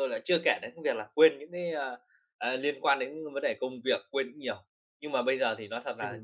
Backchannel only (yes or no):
yes